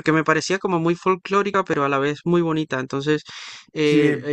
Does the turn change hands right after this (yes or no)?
no